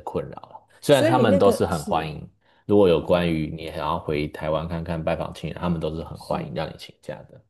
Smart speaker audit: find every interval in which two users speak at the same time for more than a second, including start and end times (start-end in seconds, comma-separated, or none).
0.9-2.1